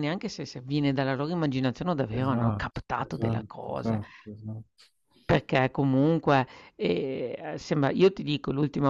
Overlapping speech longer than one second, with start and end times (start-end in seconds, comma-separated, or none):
2.2-4.0